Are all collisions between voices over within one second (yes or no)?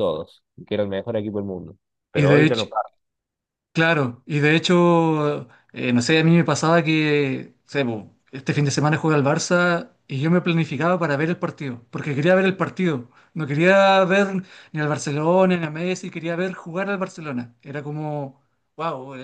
yes